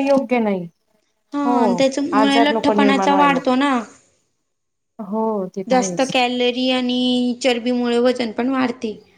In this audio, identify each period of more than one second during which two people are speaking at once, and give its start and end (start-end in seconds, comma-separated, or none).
2.2-3.4